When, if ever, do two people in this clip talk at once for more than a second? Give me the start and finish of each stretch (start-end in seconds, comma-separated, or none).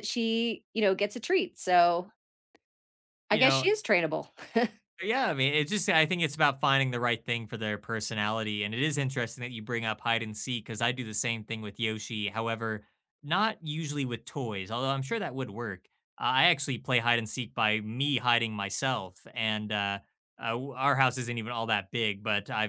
none